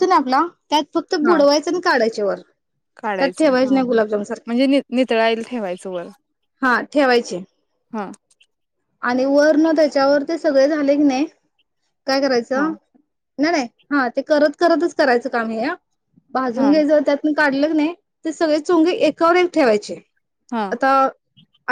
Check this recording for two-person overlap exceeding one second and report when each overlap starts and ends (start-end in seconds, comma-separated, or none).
3.2-4.5